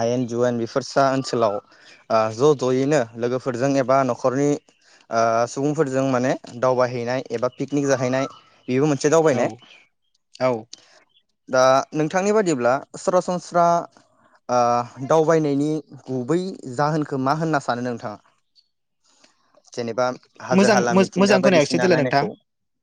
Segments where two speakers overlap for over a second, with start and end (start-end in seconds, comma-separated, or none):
20.6-22.2